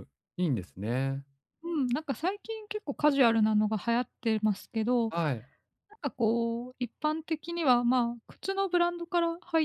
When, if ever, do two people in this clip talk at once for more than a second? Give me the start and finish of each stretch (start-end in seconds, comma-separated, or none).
none